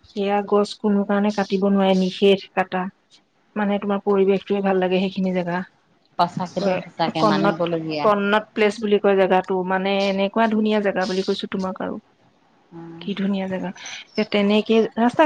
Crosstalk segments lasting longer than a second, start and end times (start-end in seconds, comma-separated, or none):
none